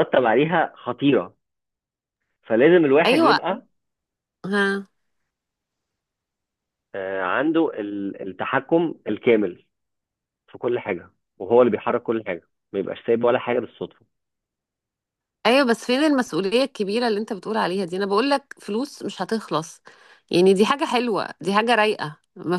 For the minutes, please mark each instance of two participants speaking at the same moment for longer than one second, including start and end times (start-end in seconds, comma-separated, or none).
none